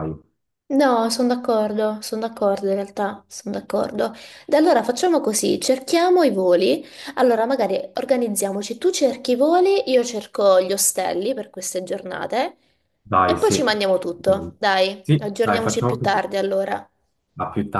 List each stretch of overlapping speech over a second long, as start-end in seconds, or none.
15.0-16.2